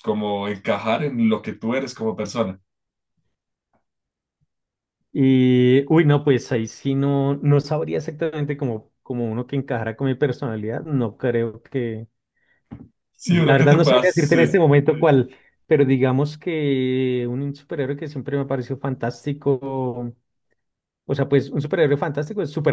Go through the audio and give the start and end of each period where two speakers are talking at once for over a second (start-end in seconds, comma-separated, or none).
13.2-14.6